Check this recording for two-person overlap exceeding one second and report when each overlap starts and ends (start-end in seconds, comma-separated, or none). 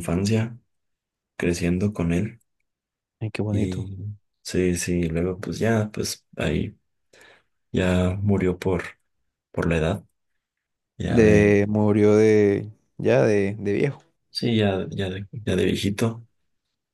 none